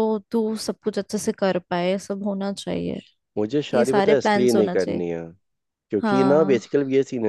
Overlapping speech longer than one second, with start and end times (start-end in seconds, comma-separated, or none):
3.7-5.0